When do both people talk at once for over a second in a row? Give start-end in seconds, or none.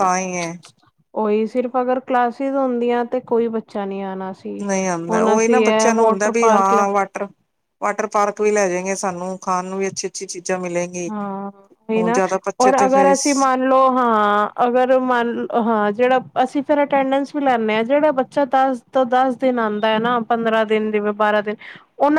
5.1-6.8